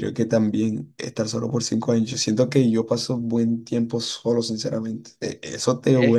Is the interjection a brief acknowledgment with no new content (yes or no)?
yes